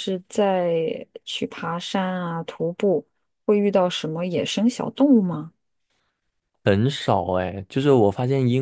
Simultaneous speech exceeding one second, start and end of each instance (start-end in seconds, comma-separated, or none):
none